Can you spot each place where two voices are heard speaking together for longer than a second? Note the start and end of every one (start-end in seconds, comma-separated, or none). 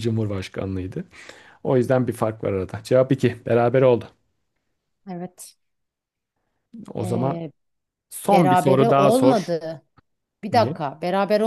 8.3-9.5